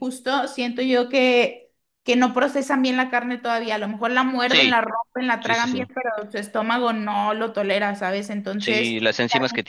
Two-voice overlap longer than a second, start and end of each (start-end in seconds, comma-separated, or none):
none